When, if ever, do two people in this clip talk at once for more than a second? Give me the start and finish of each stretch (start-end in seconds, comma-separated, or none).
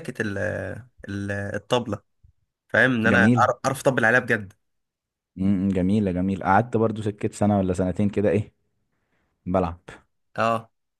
none